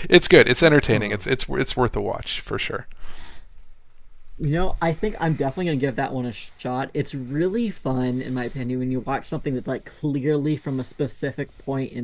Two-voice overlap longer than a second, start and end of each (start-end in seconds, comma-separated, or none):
none